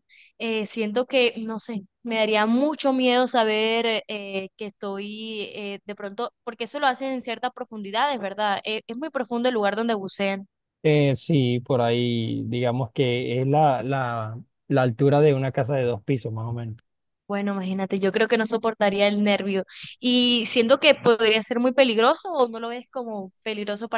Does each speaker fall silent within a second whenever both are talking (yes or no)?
yes